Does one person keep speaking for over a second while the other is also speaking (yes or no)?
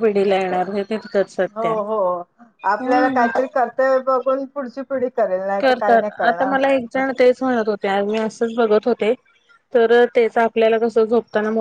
no